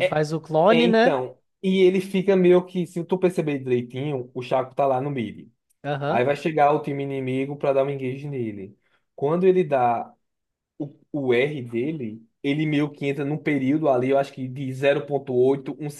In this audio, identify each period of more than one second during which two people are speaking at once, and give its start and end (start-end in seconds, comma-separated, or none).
none